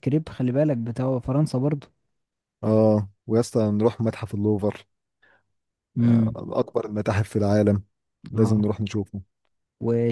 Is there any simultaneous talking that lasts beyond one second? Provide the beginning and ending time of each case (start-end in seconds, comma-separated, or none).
none